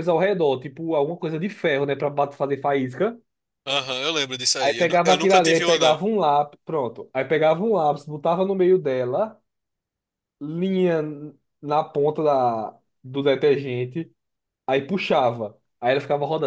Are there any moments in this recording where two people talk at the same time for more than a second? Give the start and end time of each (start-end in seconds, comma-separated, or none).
4.6-6.0